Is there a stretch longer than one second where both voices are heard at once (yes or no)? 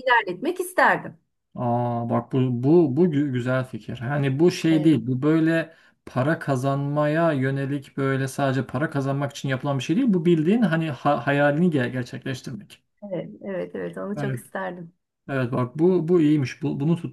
no